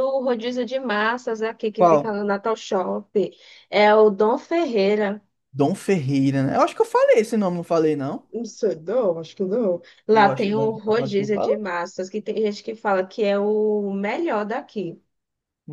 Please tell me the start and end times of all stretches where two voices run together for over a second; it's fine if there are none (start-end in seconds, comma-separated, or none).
10.1-11.7